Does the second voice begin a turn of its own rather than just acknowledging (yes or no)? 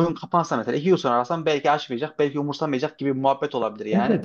yes